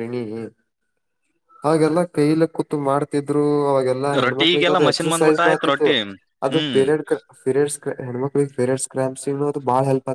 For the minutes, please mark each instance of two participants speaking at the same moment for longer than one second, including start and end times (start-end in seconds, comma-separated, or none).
4.2-5.9